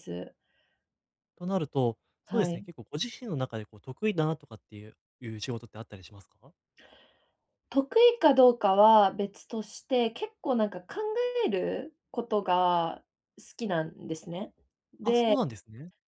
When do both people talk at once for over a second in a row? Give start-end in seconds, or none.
none